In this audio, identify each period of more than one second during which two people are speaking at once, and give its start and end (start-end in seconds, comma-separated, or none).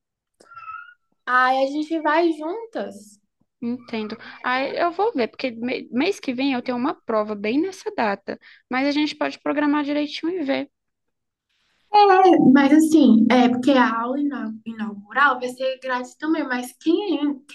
none